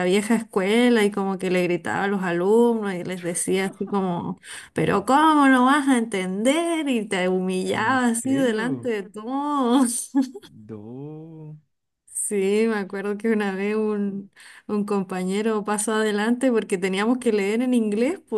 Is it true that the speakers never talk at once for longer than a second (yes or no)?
no